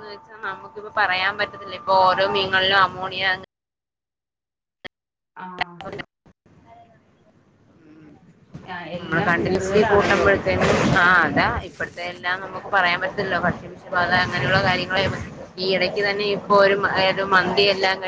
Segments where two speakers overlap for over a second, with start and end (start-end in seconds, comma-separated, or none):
9.0-10.3